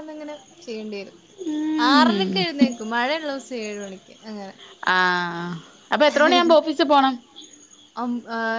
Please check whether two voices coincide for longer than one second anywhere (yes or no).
no